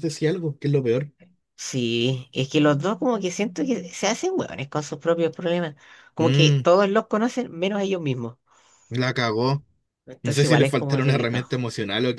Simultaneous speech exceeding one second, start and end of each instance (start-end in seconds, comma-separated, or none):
10.2-11.5